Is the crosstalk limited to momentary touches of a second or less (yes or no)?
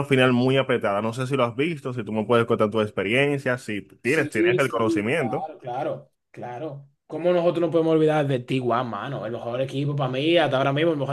no